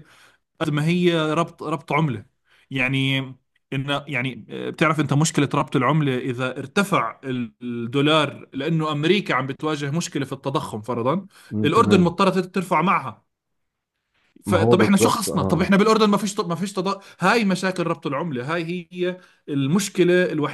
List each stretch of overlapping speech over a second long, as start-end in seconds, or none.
14.4-15.7